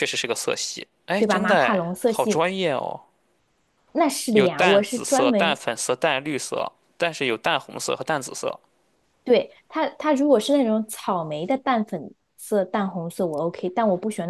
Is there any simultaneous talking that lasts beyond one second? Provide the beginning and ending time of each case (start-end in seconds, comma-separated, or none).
1.2-2.4, 4.3-5.6